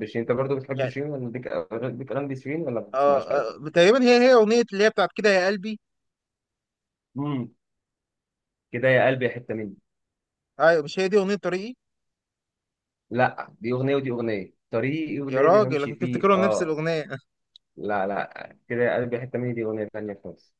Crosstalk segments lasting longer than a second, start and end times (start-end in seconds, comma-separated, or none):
15.3-16.7